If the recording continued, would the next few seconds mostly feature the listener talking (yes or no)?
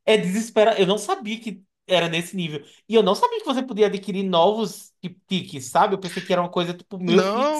yes